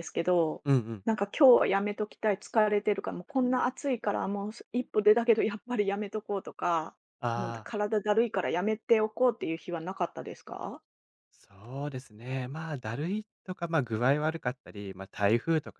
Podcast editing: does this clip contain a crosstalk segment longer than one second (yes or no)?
no